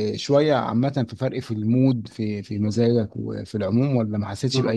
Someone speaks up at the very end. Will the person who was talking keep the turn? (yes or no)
no